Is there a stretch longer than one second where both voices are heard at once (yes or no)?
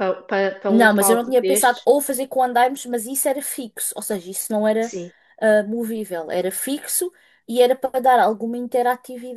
yes